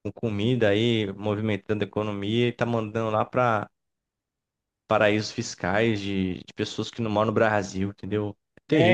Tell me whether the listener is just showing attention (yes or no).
no